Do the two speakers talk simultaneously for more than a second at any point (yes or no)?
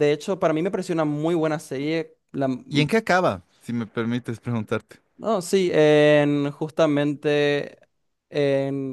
no